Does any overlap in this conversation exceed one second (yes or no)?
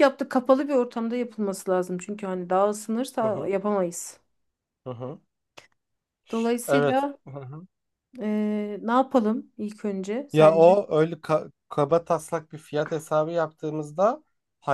no